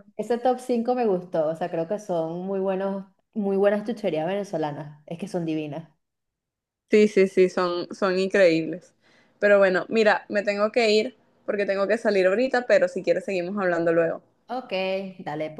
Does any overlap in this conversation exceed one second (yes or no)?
no